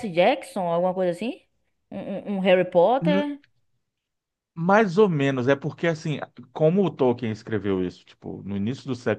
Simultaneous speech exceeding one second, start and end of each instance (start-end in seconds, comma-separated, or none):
none